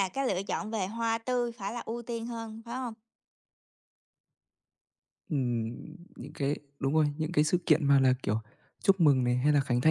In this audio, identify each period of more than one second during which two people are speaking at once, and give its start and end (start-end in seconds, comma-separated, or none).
none